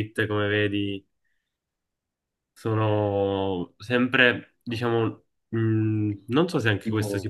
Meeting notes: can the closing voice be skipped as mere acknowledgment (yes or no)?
yes